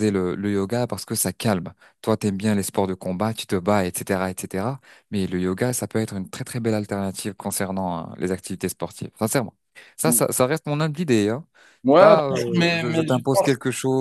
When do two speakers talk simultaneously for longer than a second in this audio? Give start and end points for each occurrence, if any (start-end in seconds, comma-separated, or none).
11.9-13.5